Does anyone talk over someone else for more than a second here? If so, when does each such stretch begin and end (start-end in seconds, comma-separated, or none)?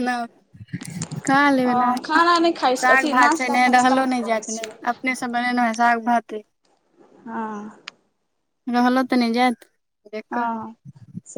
2.8-4.8